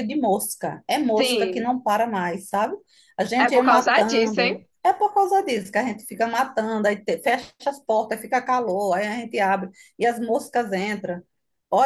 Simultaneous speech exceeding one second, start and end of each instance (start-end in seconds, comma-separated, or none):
3.4-4.6